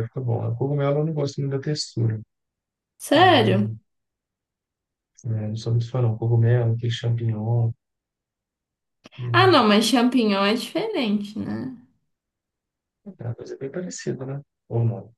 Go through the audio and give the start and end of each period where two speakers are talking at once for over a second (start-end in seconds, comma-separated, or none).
none